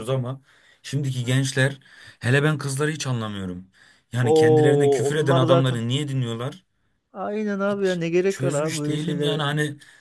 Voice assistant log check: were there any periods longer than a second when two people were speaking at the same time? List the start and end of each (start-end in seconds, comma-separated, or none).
4.2-5.8, 7.7-9.4